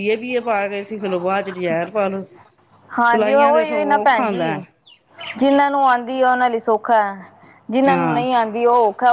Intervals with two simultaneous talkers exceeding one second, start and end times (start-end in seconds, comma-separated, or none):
3.1-4.5